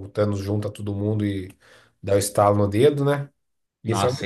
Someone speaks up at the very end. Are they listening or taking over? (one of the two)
taking over